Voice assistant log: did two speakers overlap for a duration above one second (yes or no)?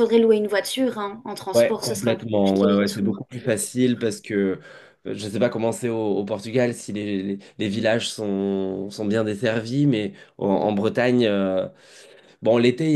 yes